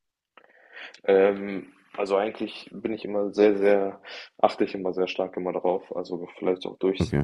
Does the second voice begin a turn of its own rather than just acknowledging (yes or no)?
no